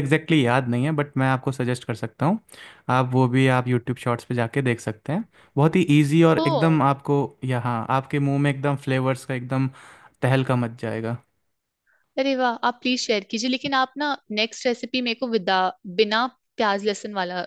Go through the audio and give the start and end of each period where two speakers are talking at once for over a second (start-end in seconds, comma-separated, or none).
none